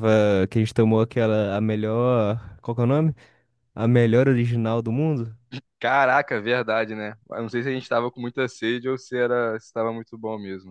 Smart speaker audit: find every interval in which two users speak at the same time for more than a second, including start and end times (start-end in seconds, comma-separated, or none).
none